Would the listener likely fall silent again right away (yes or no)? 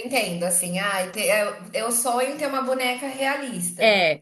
yes